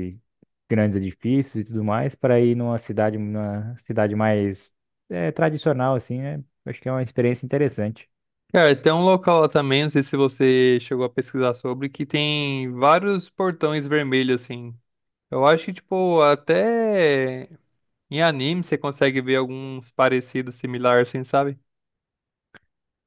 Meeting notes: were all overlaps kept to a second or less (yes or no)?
yes